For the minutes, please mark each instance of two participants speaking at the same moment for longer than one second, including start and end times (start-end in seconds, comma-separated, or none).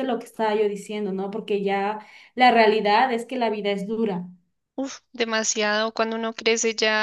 none